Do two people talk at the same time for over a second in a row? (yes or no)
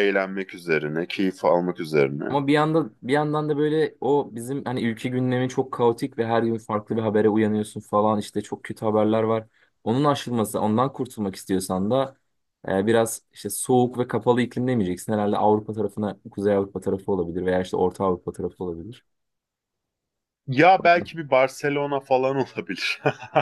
no